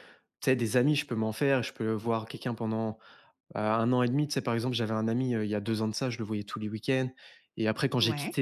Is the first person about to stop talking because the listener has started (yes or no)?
no